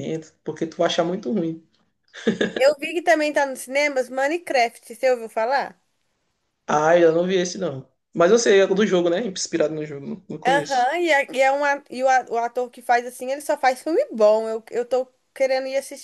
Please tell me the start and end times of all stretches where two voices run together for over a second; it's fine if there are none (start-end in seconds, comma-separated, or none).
none